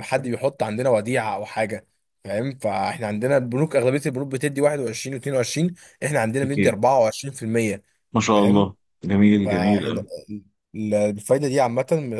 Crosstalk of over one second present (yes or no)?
no